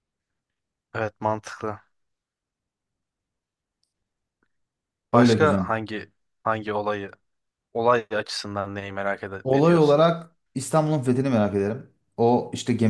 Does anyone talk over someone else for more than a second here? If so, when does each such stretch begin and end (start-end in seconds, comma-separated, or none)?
none